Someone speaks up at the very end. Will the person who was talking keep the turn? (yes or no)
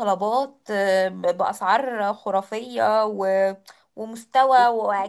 yes